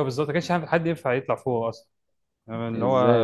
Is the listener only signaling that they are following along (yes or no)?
no